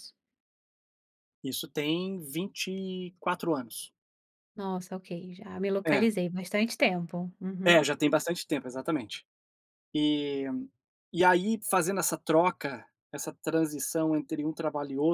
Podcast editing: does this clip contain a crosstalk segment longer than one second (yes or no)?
no